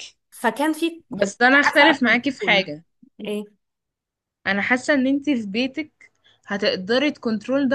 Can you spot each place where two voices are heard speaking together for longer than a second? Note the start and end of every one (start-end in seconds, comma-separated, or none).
1.1-2.6